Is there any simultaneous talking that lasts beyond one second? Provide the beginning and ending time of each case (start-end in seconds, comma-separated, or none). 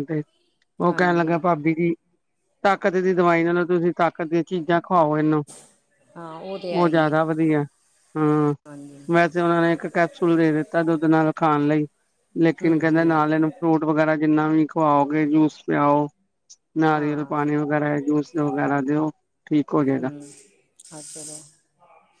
none